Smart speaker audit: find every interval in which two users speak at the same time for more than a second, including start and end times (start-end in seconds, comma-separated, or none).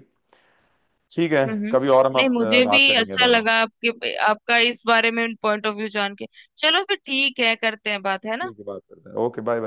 1.5-3.4